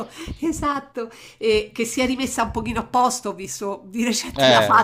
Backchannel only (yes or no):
yes